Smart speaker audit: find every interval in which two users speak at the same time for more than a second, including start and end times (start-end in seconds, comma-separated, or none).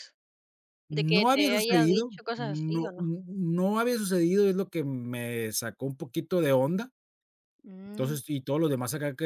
0.9-3.1